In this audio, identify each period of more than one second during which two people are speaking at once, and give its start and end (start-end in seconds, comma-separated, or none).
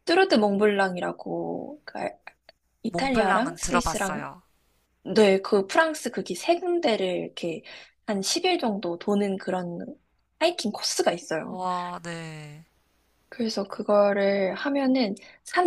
2.9-4.2